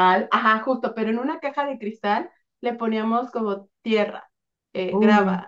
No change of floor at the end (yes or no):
yes